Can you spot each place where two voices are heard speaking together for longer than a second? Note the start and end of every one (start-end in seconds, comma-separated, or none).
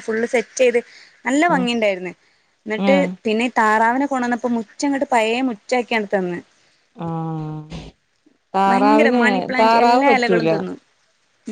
8.7-10.5